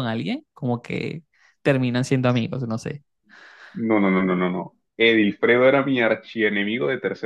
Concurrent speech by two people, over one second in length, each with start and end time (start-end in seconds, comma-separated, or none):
none